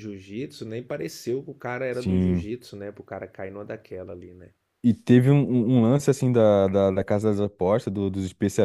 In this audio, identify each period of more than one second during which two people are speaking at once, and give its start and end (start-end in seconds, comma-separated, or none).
none